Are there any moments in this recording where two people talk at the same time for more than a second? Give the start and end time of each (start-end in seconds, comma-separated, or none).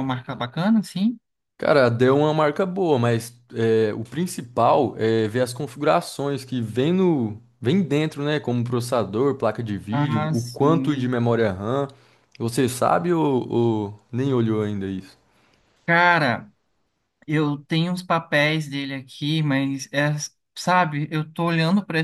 9.9-11.1